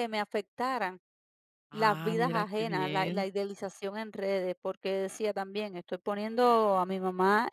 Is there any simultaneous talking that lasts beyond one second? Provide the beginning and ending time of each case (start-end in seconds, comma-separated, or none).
1.7-3.3